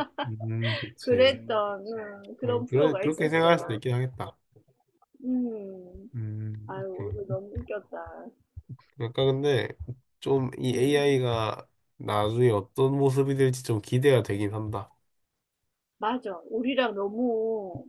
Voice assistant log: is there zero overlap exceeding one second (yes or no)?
no